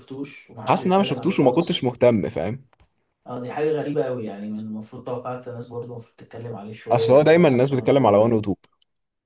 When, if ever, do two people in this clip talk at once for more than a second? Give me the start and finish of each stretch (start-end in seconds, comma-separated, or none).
0.7-1.9, 6.9-8.4